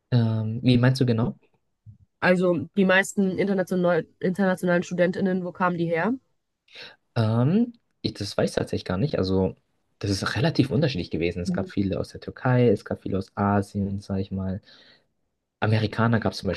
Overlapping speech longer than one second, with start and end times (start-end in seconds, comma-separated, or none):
none